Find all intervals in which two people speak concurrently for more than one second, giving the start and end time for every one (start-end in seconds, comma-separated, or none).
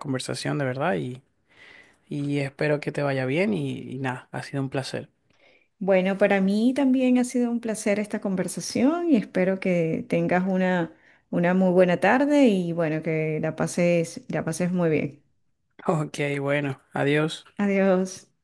none